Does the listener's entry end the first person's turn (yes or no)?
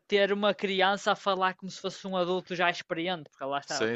yes